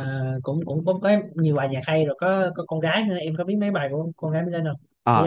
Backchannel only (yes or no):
no